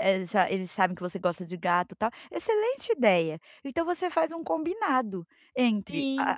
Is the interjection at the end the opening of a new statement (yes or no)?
no